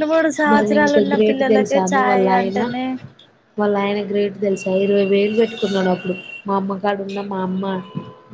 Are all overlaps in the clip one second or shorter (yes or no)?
no